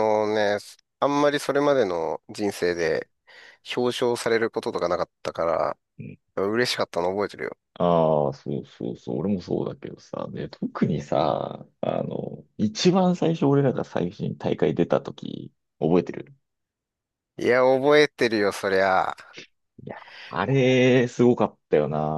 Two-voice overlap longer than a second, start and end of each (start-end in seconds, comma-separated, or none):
none